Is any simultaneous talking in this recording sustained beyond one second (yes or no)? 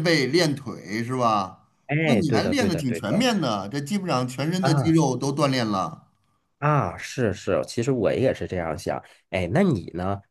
yes